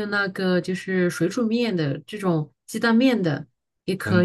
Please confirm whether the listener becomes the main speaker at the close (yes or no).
yes